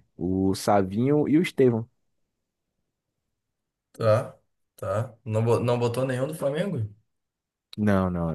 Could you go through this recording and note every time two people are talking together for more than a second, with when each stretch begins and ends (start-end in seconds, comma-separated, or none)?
none